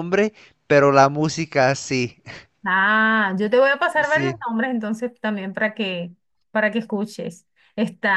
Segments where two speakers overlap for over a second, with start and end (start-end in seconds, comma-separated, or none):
none